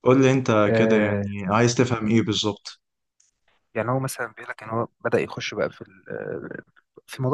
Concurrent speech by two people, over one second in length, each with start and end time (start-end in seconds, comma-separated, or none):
none